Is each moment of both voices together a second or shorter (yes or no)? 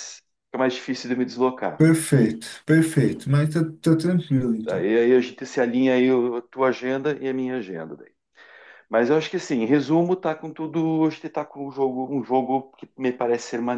yes